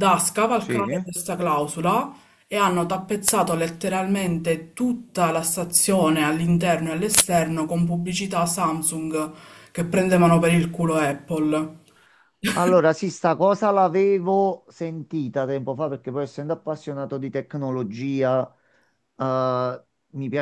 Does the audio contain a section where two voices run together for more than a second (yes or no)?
no